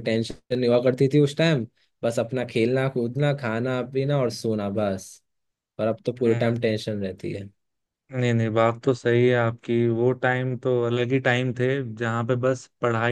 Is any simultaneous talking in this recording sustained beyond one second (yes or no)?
no